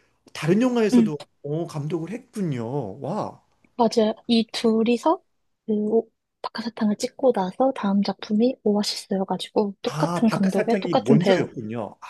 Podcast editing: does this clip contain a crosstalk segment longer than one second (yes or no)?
yes